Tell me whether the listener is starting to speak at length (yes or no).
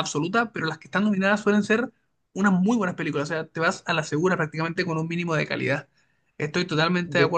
no